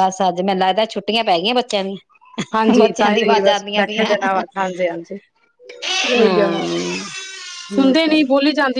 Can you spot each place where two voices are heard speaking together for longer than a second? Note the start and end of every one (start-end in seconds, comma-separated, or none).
2.8-4.4